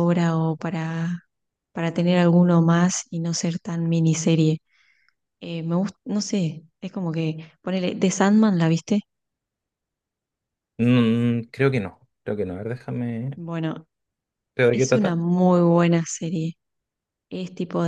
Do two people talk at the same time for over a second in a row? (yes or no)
no